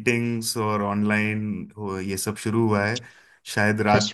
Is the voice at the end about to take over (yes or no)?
no